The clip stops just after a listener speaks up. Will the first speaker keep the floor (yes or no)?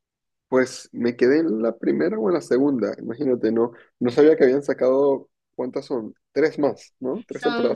no